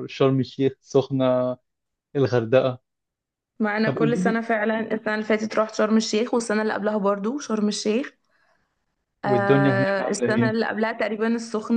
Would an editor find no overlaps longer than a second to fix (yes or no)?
no